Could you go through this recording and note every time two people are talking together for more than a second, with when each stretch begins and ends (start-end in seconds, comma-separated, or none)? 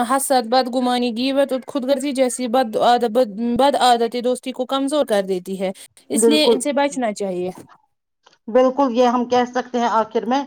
none